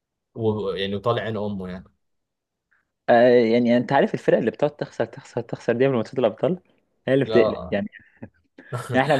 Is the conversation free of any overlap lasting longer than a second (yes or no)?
yes